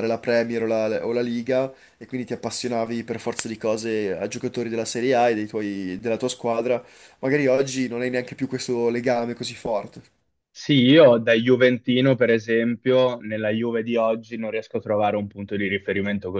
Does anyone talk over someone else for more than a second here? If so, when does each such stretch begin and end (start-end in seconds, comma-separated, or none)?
none